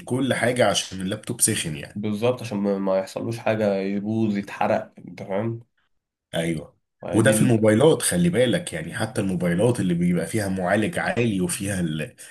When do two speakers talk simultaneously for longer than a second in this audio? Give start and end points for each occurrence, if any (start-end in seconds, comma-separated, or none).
none